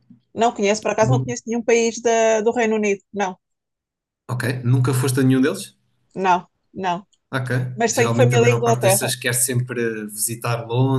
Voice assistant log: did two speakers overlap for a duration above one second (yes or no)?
yes